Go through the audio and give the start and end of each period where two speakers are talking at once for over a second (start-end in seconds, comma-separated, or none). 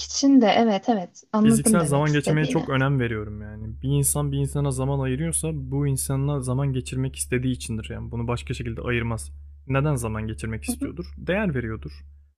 1.5-2.7